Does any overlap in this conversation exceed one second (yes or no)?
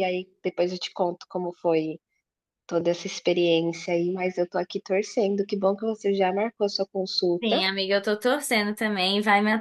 no